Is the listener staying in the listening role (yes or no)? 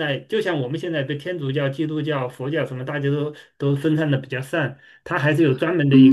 no